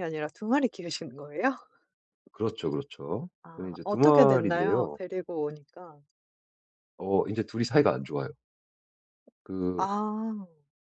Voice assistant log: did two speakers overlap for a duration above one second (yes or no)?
yes